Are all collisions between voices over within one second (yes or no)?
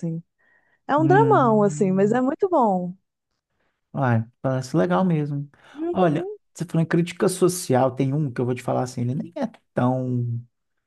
no